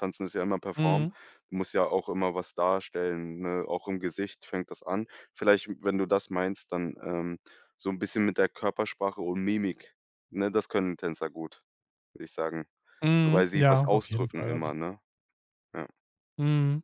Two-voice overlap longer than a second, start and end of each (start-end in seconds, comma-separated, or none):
13.2-14.7